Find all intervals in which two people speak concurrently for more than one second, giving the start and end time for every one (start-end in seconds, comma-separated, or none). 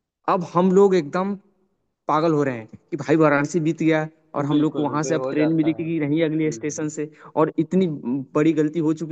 4.4-6.9